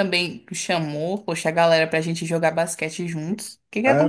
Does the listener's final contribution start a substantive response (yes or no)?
yes